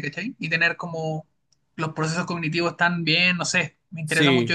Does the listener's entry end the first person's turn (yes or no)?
yes